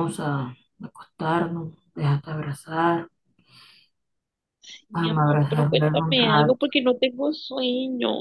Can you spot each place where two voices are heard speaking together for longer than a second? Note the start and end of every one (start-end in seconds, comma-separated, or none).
4.9-6.7